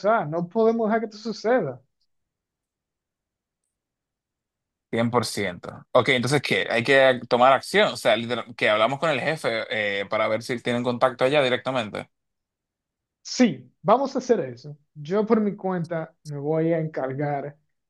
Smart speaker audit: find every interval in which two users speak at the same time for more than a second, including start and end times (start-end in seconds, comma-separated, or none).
none